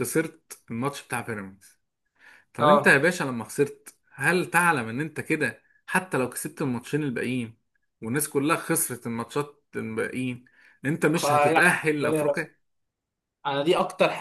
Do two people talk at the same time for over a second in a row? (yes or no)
yes